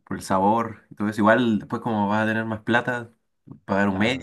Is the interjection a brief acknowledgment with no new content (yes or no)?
no